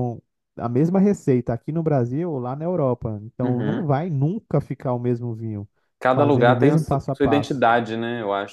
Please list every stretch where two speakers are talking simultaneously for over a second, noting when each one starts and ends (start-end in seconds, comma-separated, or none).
6.1-7.7